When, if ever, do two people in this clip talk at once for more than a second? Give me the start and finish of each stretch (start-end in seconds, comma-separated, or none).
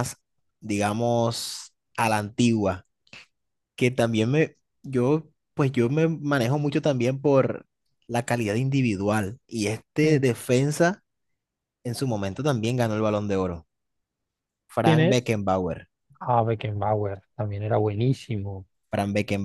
none